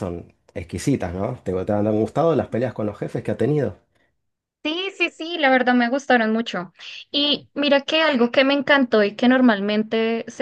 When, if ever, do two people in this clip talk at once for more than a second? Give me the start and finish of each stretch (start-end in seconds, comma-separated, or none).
none